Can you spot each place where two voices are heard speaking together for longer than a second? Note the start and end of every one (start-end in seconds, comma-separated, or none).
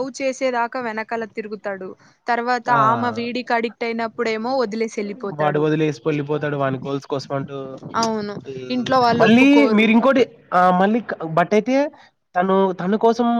none